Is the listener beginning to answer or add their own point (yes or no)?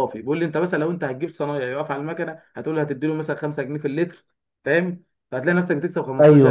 no